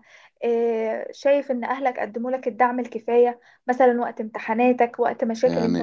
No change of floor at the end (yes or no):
no